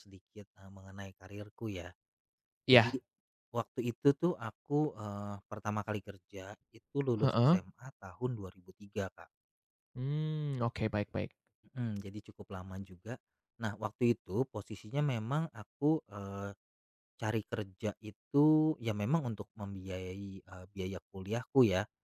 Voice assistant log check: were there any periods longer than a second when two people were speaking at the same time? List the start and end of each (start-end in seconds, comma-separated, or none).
none